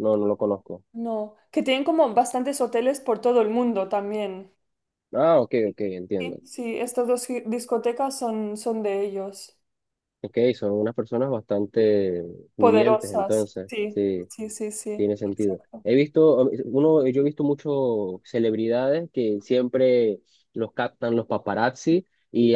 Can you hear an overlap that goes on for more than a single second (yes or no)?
yes